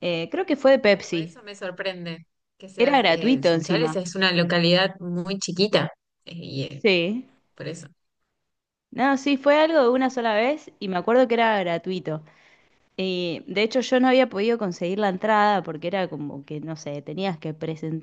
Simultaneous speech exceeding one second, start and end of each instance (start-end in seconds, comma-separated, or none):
2.8-4.0